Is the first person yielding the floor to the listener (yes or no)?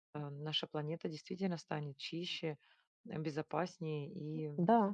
yes